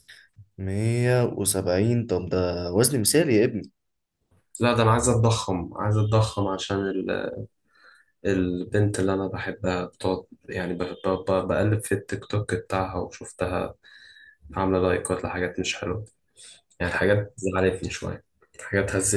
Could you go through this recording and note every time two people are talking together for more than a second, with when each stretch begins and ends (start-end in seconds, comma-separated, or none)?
none